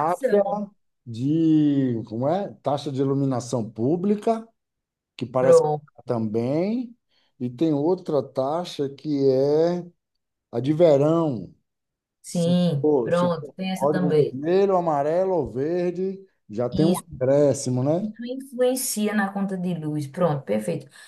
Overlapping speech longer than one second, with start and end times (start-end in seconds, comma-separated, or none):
12.3-14.4